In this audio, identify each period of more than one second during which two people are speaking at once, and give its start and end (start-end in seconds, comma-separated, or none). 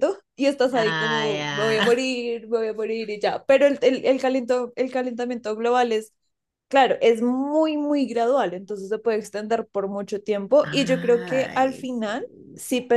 0.7-2.1, 10.6-12.4